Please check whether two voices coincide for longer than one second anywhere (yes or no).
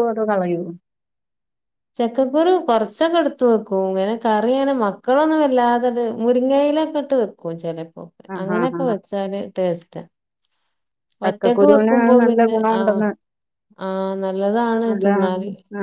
yes